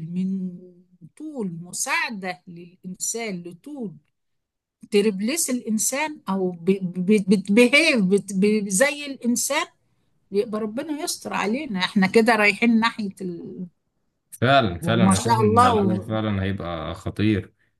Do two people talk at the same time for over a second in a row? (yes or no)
yes